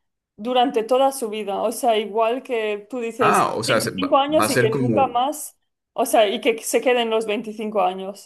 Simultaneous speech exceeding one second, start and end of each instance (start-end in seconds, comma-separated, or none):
3.2-5.0